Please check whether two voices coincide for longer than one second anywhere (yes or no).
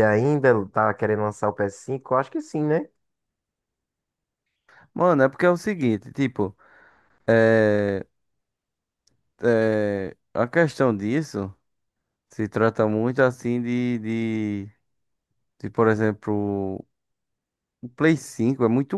no